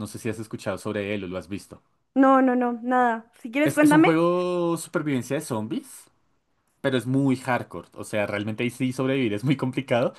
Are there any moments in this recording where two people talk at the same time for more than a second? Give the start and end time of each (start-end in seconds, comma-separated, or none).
none